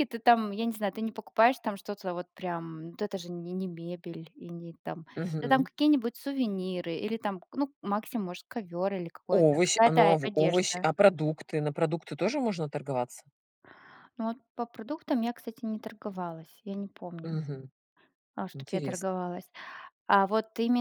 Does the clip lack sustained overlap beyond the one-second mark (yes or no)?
no